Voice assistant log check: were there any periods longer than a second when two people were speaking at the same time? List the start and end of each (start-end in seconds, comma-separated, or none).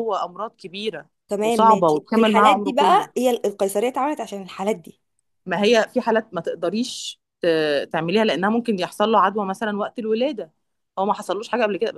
1.3-3.1